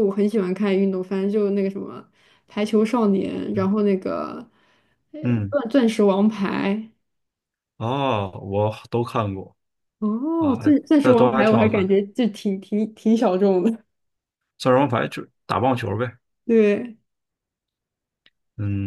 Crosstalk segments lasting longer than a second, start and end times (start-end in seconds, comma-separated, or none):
10.4-11.9